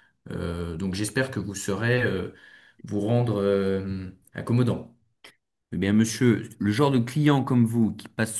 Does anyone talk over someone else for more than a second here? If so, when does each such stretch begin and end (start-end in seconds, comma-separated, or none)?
none